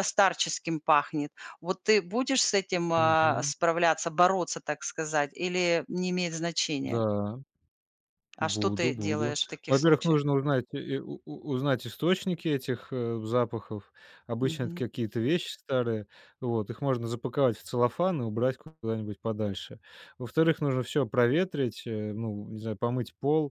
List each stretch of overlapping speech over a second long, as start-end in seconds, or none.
8.4-10.2